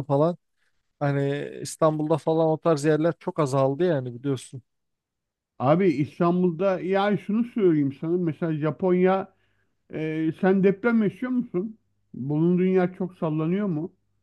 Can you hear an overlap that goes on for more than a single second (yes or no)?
no